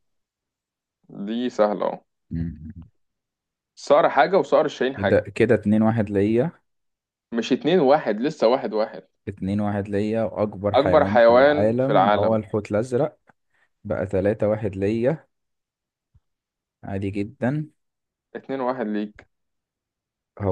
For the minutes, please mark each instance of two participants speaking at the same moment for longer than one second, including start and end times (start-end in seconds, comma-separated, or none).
10.7-12.4